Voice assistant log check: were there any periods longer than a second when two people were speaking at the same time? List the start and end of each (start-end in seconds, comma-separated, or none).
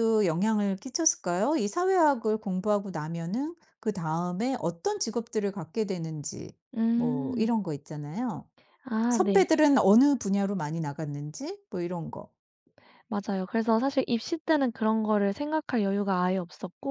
none